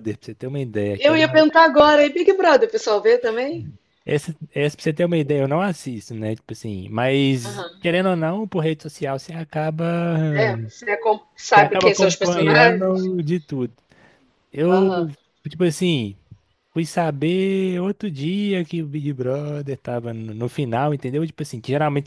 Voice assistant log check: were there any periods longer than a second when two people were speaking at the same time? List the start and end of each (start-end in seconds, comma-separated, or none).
11.5-13.0